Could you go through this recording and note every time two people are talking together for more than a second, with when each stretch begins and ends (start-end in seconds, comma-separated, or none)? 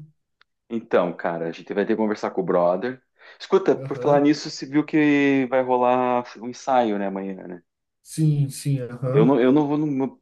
none